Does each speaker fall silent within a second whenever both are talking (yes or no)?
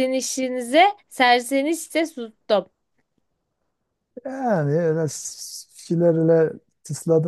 yes